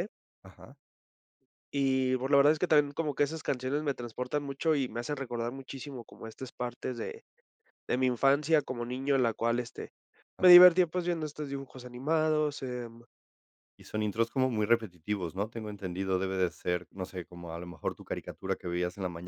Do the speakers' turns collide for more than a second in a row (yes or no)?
no